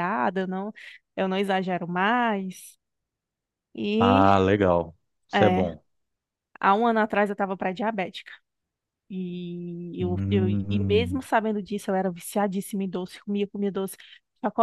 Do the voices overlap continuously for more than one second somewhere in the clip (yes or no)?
yes